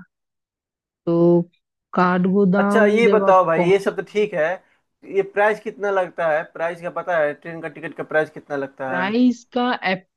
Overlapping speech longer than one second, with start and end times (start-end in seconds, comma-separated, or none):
2.6-4.2